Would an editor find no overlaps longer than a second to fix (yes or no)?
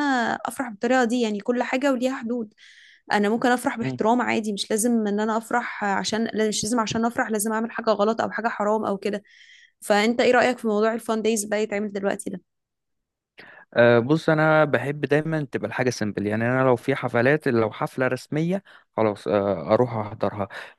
yes